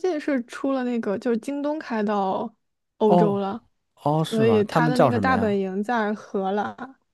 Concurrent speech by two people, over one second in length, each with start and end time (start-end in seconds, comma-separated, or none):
4.3-5.6